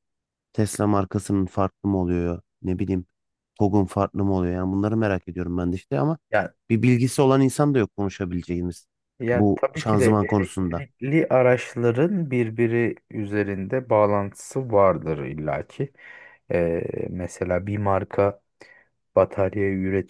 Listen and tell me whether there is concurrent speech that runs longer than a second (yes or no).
yes